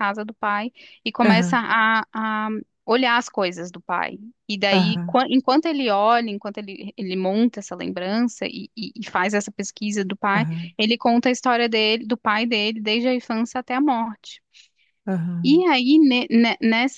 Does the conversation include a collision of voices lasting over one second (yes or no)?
no